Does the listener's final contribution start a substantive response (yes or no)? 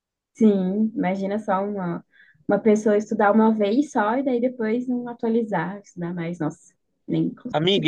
yes